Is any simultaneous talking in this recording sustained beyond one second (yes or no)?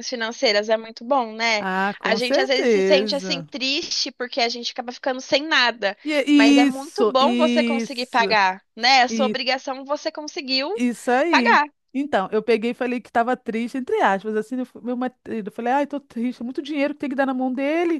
yes